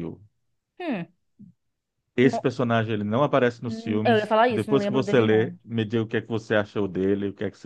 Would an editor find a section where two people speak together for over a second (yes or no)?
yes